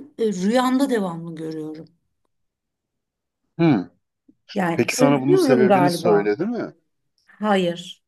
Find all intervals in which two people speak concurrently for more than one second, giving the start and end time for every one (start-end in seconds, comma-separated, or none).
4.8-6.3